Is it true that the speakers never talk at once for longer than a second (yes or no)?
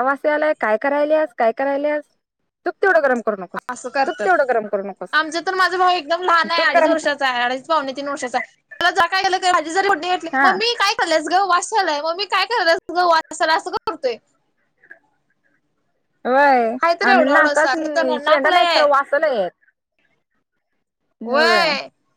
no